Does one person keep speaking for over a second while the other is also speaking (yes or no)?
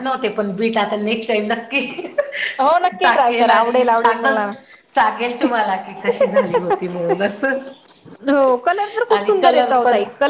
yes